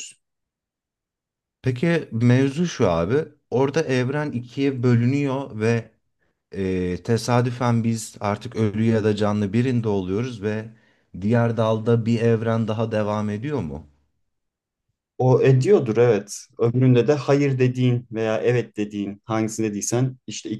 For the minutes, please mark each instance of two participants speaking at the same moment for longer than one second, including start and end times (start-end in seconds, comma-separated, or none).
none